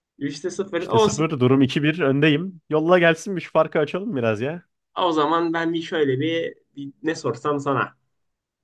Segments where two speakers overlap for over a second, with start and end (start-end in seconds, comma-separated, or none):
none